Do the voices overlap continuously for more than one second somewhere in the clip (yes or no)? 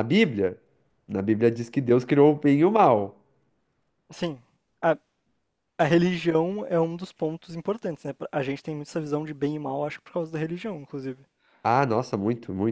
no